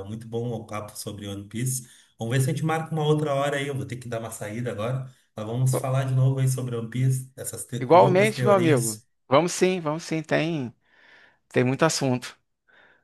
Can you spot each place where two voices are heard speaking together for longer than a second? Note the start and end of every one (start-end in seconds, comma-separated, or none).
7.8-9.1